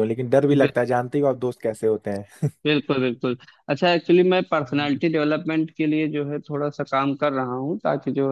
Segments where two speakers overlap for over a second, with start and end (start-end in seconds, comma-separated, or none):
none